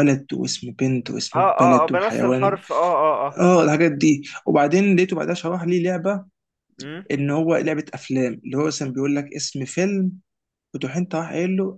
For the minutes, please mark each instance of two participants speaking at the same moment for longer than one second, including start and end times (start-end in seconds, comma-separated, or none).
1.3-2.6